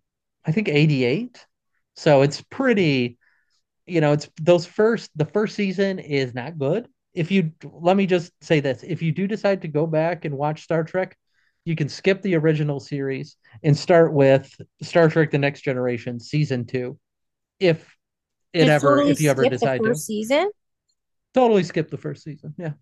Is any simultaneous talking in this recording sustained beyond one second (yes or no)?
yes